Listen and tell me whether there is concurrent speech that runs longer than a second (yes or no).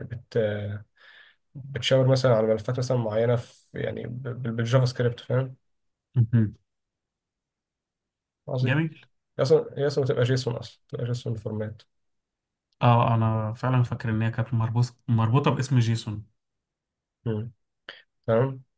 no